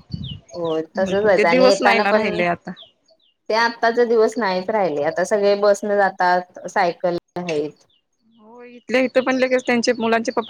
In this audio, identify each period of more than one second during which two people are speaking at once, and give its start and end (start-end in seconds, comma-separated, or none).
0.8-2.3